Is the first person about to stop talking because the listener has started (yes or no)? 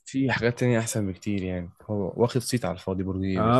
yes